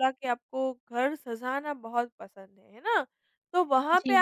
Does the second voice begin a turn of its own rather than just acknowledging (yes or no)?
no